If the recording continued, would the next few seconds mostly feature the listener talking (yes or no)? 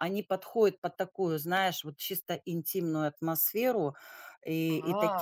no